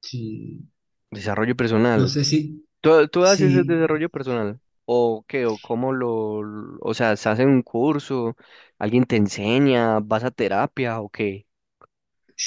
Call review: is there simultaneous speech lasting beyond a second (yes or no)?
no